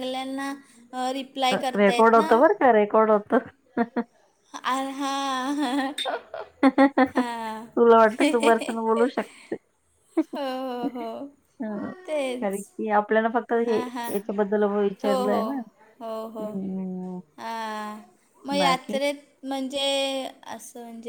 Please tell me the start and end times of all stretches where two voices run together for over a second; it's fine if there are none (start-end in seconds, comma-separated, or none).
none